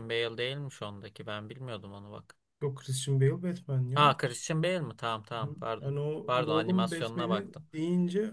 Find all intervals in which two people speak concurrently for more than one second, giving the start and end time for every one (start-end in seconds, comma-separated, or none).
5.4-7.7